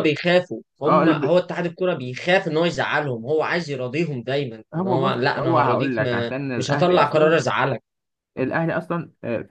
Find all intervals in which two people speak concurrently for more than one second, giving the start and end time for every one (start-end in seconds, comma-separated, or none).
4.7-7.4